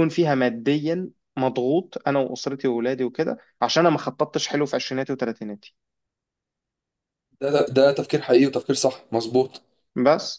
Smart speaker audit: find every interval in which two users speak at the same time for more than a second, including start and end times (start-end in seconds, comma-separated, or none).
none